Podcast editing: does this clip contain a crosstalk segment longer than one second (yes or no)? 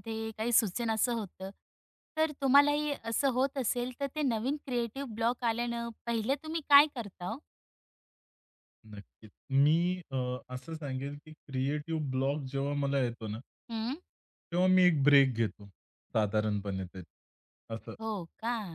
no